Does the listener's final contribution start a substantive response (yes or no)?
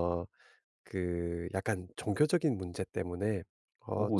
no